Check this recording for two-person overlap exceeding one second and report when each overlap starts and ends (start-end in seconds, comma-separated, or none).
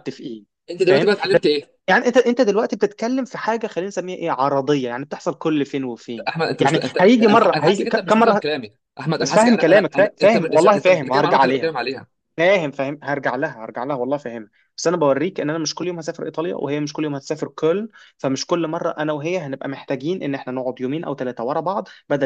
6.3-8.4, 9.2-11.7